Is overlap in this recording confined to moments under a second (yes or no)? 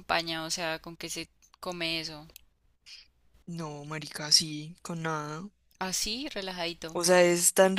yes